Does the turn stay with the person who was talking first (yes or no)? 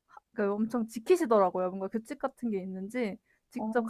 yes